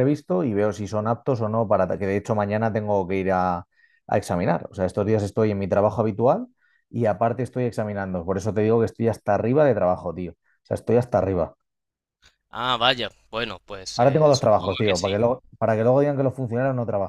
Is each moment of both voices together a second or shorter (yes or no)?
no